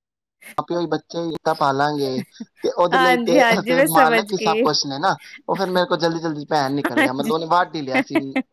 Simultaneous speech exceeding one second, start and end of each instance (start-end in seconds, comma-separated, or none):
2.9-4.7